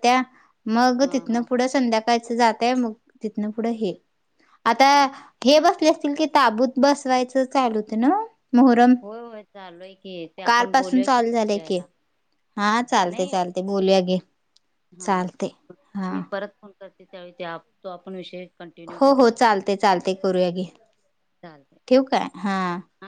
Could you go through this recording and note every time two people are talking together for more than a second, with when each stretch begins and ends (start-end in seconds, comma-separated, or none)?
10.4-11.8